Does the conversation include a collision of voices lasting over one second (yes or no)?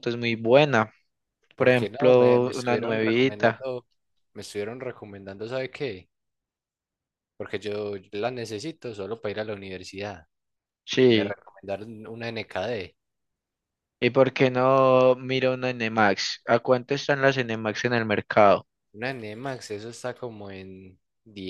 yes